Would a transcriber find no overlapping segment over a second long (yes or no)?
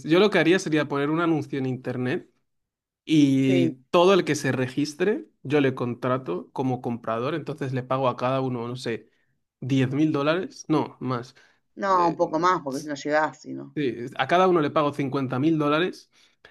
yes